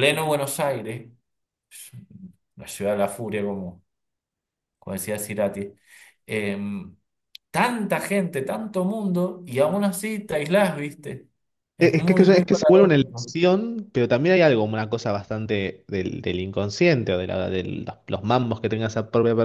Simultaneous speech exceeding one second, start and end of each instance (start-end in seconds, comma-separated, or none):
11.8-13.3